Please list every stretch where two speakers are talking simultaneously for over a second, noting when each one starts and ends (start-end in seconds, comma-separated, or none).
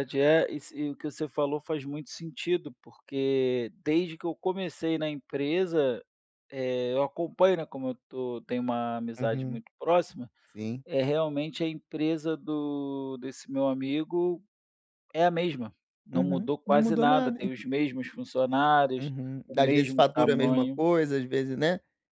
16.1-17.4, 19.0-20.8